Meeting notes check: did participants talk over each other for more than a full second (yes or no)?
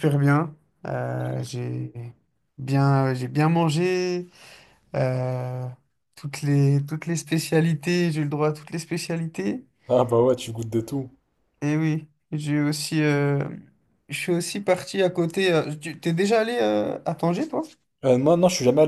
no